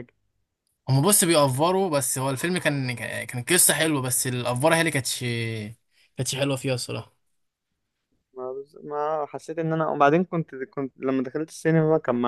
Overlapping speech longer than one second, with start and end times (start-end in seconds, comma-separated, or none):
none